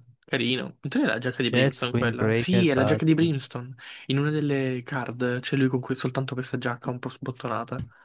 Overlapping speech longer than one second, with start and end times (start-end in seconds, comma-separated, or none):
1.4-3.4